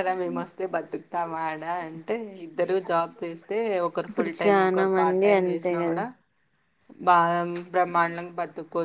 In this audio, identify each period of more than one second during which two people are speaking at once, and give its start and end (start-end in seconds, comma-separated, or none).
4.1-6.0